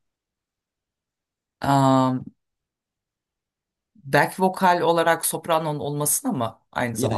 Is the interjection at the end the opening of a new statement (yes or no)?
yes